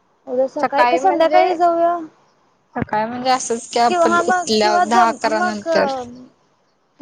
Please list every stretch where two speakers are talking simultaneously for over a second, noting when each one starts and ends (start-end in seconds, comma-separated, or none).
3.9-5.7